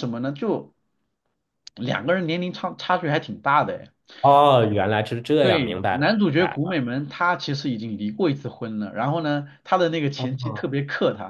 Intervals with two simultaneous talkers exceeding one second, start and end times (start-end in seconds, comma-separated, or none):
5.4-6.8